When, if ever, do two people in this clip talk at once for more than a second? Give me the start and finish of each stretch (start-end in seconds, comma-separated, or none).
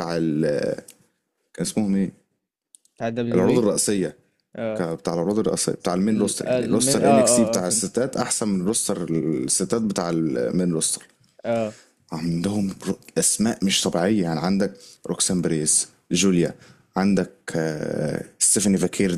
6.1-7.9